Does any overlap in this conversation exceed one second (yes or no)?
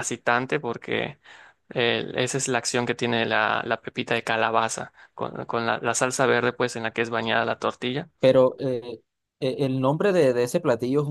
no